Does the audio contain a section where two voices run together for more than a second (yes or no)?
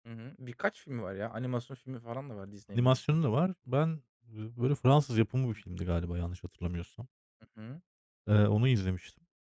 no